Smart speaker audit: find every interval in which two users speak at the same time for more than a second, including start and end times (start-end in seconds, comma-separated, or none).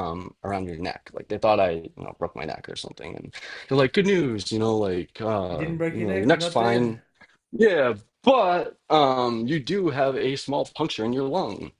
5.5-7.0